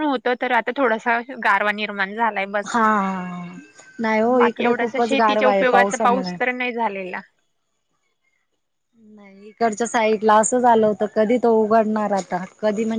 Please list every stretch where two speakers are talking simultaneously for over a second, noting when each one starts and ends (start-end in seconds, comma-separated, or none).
4.4-6.4